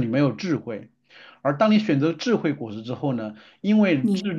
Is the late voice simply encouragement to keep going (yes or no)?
yes